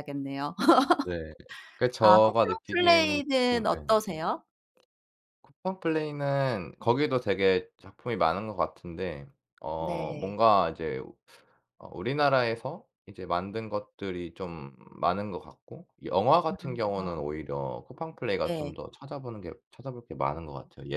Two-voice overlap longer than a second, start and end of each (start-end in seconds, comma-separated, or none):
2.0-4.0